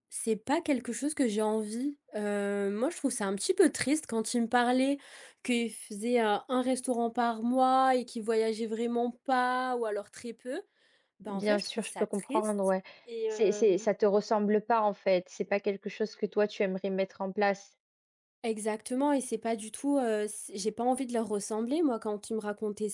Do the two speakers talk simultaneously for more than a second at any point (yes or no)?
yes